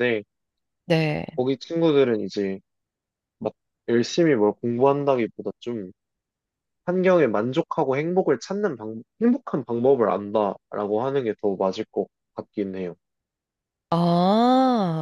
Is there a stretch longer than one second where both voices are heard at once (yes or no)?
no